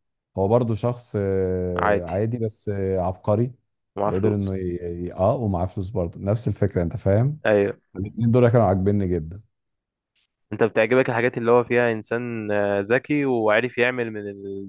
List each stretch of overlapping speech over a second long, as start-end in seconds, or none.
none